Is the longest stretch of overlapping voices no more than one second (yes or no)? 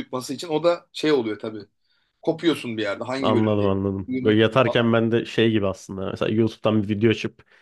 no